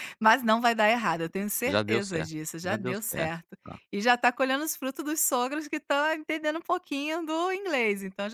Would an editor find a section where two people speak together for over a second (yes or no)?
yes